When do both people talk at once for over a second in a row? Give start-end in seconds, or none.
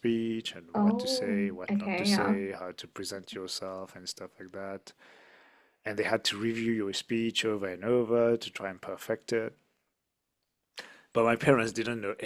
0.8-2.4